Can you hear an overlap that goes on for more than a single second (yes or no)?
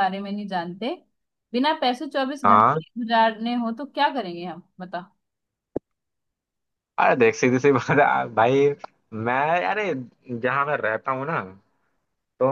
no